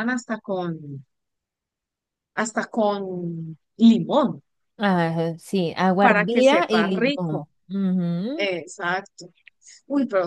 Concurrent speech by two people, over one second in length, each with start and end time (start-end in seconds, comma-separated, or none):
6.0-7.5